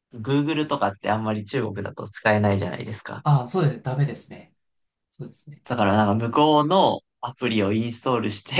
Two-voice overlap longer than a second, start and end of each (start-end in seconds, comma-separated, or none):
none